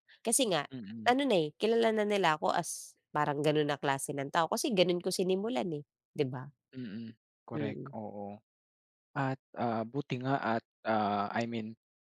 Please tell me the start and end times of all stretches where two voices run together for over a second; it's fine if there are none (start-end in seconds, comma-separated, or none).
none